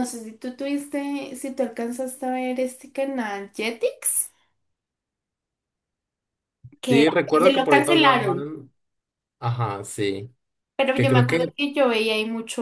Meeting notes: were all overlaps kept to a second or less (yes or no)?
no